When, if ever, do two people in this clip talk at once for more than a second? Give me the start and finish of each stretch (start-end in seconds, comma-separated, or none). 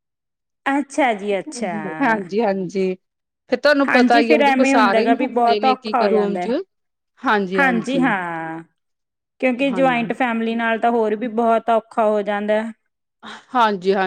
3.9-6.5